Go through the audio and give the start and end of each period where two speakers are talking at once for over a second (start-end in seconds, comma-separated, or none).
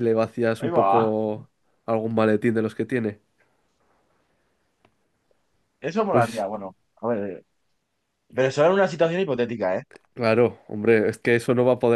none